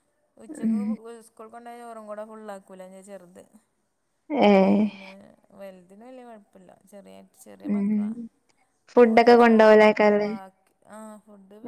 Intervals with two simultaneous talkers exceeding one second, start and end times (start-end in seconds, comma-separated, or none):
9.1-10.3